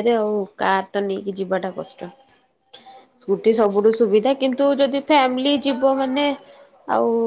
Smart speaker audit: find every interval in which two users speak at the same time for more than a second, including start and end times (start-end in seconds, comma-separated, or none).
3.2-4.8